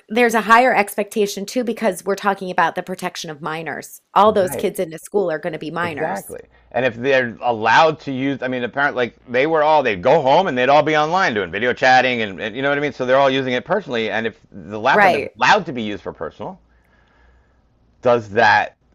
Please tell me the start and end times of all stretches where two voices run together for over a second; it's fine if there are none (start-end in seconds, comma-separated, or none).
none